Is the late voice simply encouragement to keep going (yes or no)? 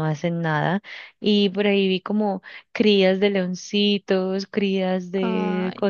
yes